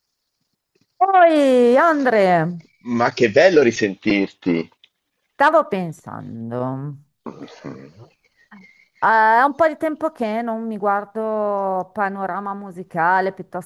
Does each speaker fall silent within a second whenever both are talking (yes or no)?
yes